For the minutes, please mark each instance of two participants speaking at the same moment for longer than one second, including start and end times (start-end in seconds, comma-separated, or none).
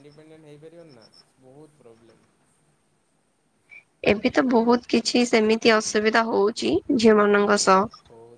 none